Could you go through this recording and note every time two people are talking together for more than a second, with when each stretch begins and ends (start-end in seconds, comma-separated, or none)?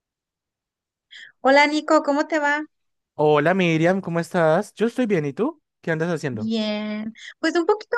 none